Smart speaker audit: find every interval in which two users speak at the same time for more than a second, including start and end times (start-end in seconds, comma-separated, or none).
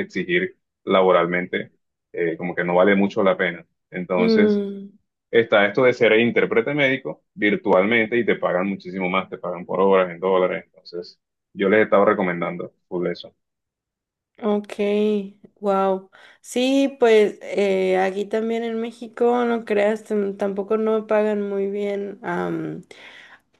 none